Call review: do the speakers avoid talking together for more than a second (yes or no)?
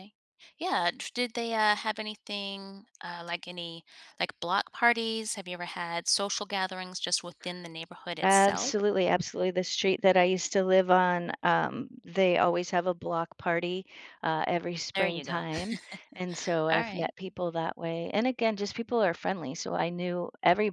yes